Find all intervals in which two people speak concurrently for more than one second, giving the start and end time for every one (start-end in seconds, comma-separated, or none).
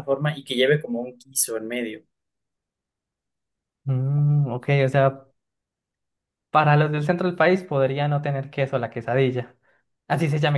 none